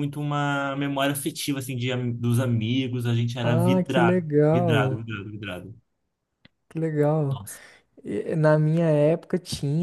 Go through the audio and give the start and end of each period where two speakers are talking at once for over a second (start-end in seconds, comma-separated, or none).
3.4-5.0